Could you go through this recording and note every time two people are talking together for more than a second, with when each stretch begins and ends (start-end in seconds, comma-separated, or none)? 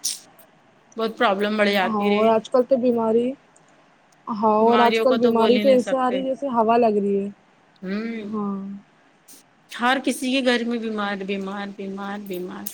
4.6-6.2